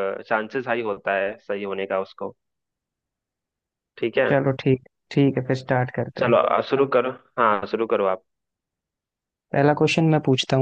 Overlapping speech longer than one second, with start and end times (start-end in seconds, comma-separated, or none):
none